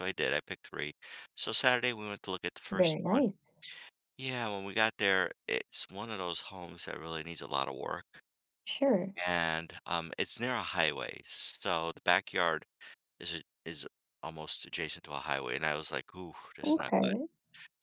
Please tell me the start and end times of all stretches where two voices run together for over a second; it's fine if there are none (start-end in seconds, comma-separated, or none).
none